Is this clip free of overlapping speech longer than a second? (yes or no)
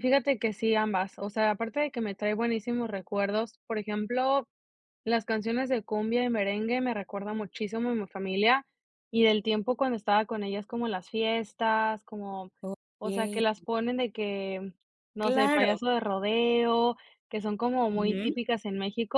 yes